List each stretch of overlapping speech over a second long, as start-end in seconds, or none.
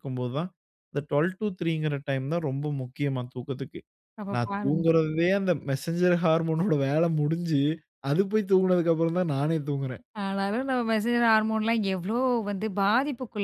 none